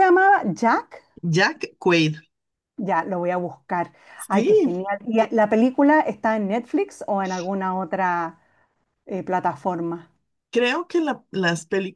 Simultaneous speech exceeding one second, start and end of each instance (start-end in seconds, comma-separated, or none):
none